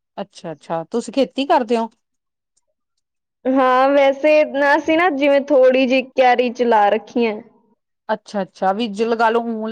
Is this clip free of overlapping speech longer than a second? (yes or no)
yes